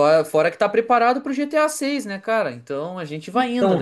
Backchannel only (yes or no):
no